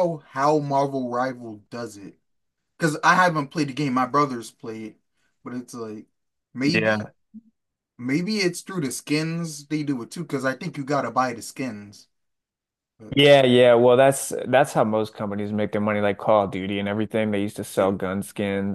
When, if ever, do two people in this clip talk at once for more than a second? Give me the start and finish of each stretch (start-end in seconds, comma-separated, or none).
none